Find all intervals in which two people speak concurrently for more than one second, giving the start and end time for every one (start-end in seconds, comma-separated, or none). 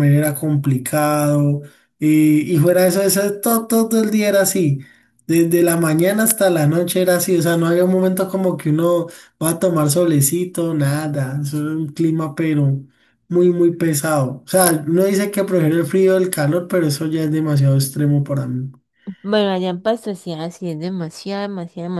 none